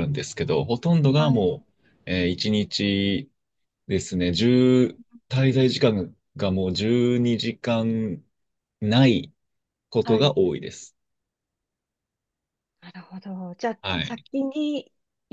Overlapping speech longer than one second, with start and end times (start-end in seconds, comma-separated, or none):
none